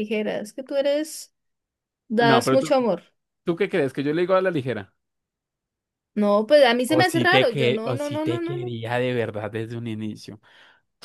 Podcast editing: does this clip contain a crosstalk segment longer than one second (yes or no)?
yes